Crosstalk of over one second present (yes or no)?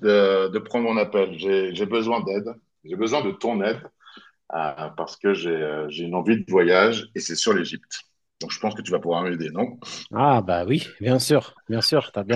no